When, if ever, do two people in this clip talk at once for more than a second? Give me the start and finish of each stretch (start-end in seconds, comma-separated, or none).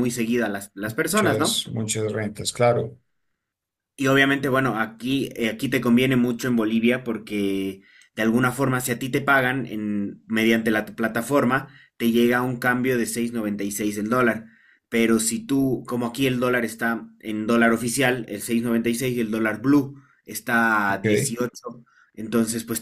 none